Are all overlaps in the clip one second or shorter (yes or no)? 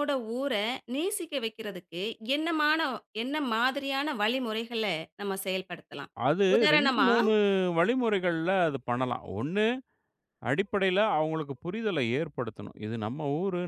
yes